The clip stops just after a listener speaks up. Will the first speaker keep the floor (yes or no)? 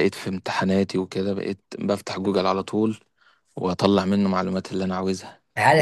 no